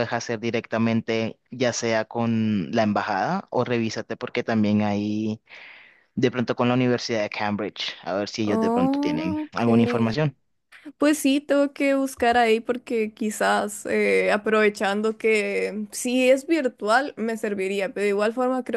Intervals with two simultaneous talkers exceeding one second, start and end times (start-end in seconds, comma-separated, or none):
8.4-9.7